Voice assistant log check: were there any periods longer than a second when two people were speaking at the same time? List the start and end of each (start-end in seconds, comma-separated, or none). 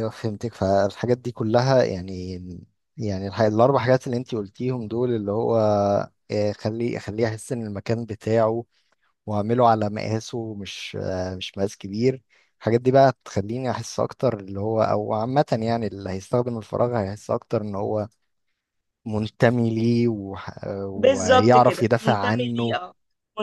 20.9-22.8